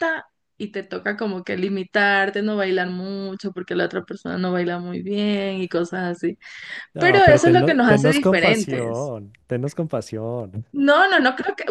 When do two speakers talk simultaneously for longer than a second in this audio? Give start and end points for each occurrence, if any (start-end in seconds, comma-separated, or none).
7.0-9.1